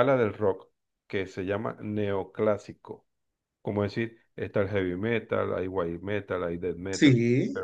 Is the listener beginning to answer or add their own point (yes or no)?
no